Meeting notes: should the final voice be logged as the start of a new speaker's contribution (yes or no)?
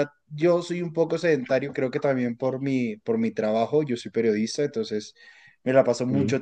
no